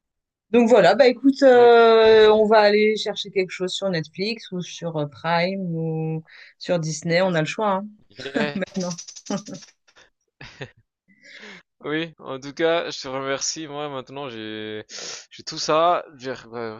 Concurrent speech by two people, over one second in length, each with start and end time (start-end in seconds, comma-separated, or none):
none